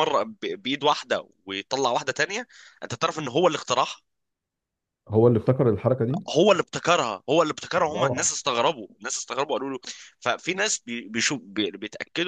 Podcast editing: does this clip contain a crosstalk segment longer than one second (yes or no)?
no